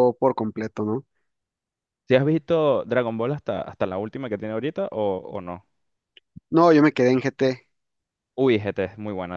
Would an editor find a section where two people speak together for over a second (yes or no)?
no